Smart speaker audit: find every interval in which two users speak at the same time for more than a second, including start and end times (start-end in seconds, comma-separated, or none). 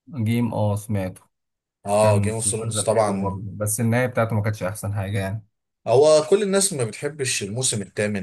2.0-3.4